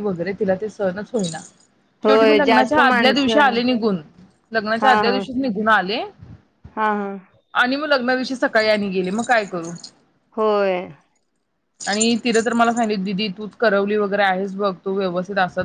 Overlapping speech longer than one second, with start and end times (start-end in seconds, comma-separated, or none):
2.1-3.6